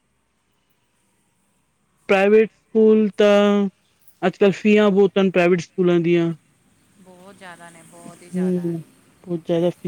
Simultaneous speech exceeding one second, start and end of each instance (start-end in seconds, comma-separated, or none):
none